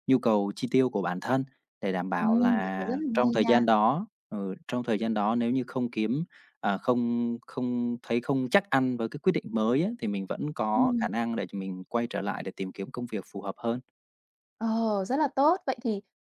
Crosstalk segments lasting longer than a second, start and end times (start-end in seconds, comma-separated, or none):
2.2-3.6